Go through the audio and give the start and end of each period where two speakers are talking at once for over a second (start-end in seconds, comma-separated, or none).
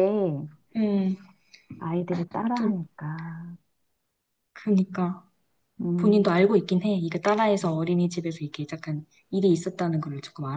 none